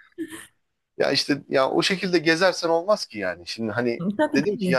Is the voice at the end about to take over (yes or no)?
no